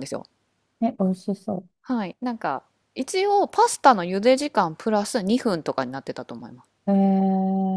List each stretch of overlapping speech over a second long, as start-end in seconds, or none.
none